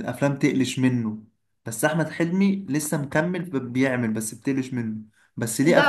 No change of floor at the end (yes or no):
no